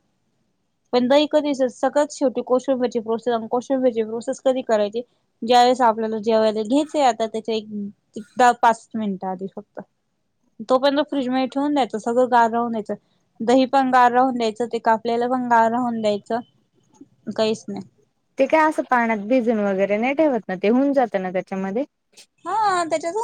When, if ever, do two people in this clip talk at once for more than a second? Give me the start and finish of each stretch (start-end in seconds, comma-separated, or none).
none